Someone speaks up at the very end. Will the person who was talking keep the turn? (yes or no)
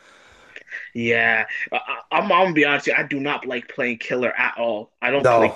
yes